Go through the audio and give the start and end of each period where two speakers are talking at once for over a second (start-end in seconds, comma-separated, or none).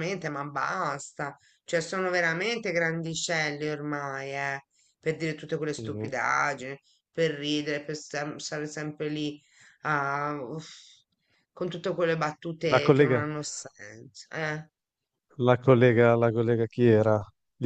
none